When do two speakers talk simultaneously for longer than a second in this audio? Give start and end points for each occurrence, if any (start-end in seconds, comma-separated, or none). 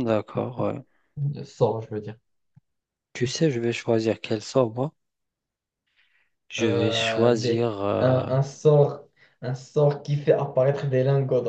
6.6-8.2